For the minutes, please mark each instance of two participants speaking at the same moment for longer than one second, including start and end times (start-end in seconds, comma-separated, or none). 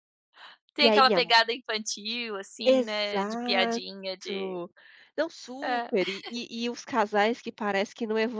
2.6-3.8